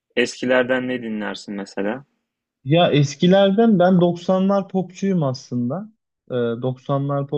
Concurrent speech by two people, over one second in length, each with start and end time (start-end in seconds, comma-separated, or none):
none